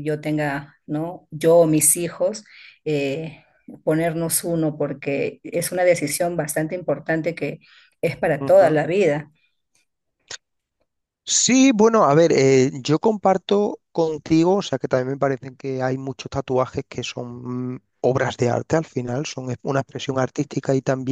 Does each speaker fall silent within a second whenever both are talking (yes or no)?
yes